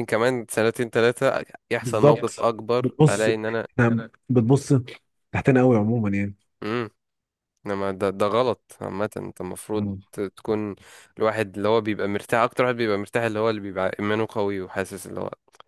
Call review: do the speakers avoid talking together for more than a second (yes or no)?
no